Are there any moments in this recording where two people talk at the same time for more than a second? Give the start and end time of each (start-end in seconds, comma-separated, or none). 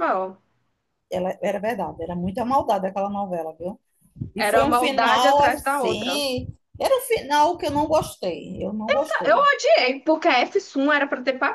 4.4-6.2